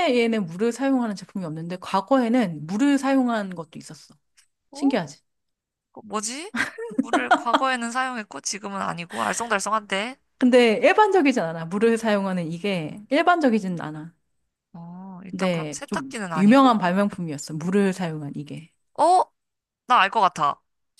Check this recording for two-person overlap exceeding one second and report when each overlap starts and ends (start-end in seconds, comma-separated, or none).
15.3-16.8